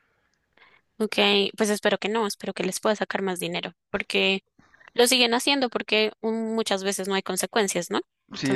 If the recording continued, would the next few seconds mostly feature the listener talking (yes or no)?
yes